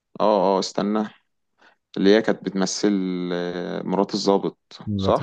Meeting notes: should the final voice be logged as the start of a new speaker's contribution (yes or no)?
yes